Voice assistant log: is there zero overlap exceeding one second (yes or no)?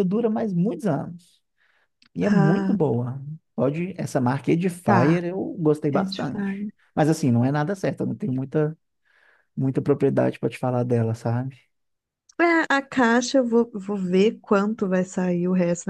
yes